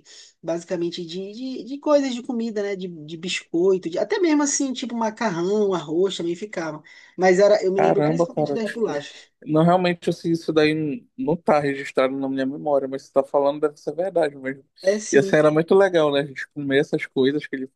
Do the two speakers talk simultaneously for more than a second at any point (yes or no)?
yes